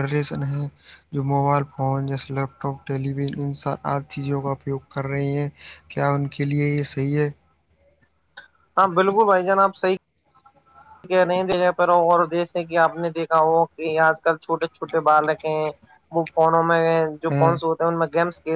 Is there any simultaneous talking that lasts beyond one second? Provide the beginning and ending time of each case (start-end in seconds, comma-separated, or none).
none